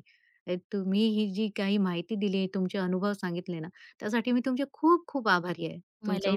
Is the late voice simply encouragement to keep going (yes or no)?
no